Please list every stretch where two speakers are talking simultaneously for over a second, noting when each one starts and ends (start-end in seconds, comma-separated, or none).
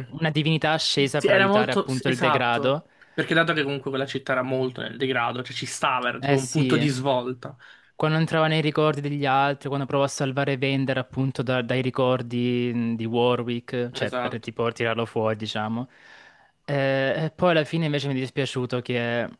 1.1-2.9